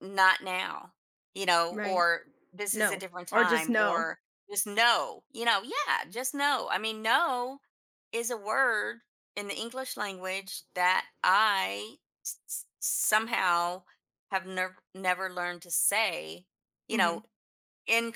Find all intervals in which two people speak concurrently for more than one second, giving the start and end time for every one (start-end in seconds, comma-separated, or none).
2.7-4.1